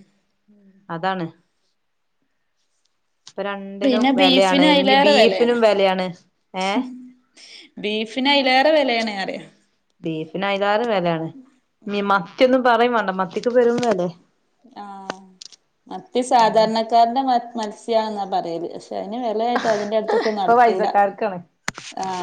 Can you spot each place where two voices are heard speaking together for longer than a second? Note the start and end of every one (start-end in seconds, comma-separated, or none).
3.8-5.6